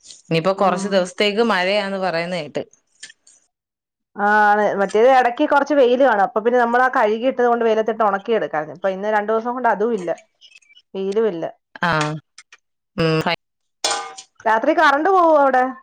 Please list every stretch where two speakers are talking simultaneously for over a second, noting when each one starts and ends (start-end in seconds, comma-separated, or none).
none